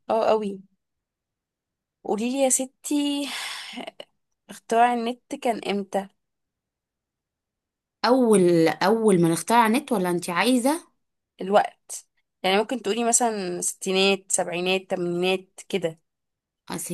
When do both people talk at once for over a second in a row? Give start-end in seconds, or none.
none